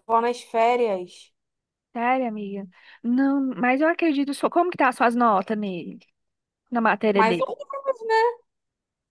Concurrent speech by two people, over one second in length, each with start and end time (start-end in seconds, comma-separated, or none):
none